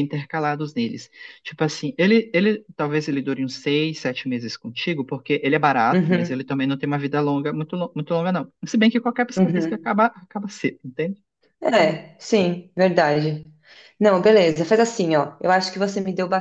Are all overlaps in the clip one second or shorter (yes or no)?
yes